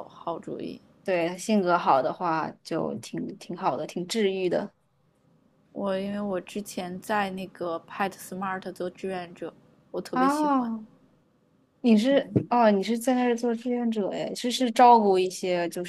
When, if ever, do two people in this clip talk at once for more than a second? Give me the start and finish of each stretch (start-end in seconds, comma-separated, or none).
none